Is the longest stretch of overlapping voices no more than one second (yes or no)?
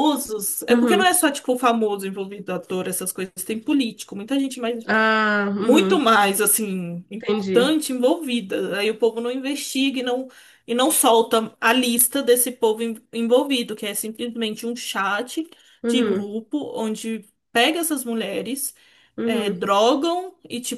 yes